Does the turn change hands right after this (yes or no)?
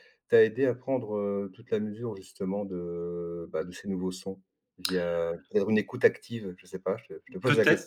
yes